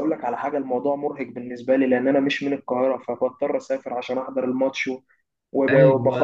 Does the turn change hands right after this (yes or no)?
yes